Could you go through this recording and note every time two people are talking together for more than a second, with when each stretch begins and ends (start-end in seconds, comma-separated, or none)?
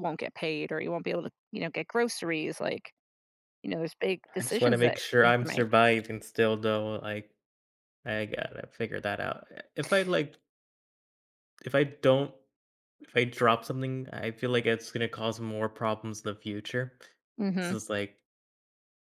4.4-5.7